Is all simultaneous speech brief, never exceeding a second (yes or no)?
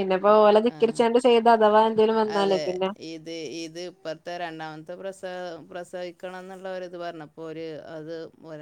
yes